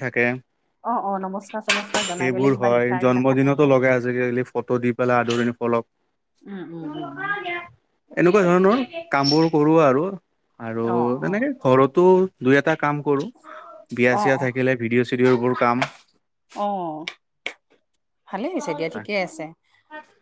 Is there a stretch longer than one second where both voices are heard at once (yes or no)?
yes